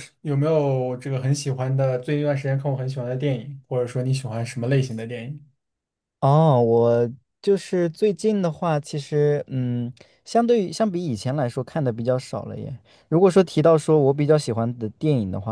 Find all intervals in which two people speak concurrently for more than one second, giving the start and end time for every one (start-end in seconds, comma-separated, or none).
none